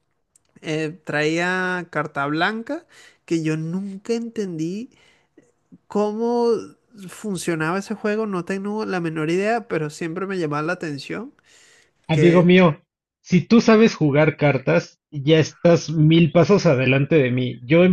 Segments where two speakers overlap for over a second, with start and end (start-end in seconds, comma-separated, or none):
none